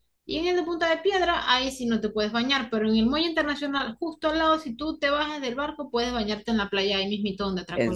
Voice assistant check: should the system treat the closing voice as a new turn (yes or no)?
yes